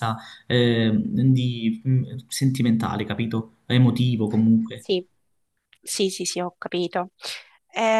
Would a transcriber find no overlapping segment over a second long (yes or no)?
yes